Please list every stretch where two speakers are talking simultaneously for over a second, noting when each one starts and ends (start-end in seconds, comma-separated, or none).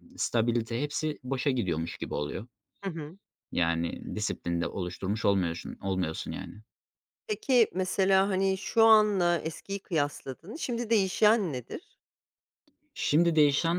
none